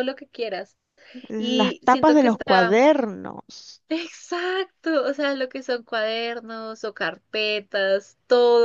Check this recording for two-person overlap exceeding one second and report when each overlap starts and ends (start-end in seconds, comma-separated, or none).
1.4-2.8